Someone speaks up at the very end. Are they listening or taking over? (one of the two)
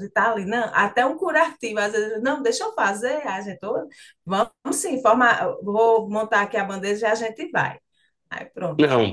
taking over